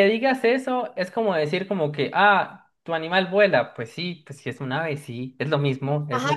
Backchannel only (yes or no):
no